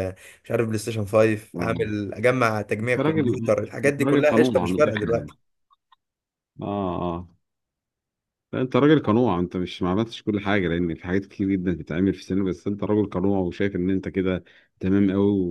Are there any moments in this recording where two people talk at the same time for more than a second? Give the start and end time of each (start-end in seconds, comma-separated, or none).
2.8-5.3